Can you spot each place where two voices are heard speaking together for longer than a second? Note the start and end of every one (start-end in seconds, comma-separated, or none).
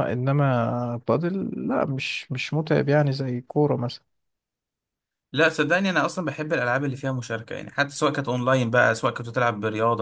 none